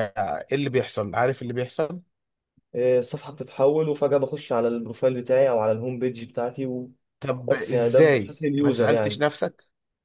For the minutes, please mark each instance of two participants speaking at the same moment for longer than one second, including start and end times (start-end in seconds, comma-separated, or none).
7.7-9.2